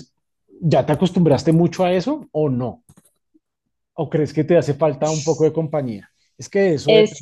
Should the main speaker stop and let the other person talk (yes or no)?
yes